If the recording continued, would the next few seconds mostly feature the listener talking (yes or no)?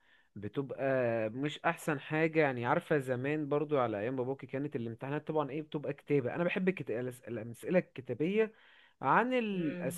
no